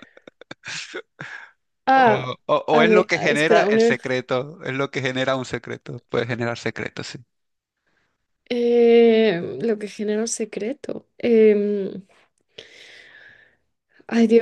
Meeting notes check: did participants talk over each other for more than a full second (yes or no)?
yes